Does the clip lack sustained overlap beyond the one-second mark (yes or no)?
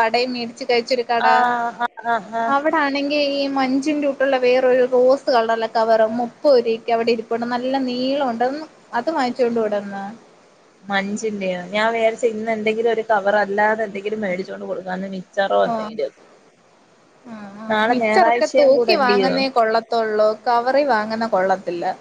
no